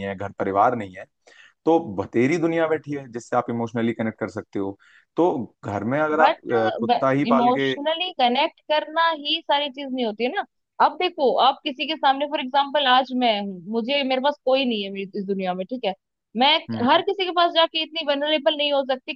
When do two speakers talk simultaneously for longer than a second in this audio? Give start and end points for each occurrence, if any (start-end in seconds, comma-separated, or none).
none